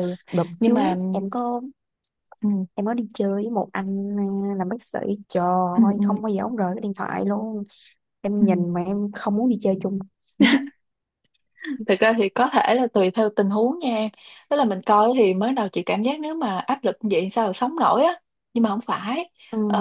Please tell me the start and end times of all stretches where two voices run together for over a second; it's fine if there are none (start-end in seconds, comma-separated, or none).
none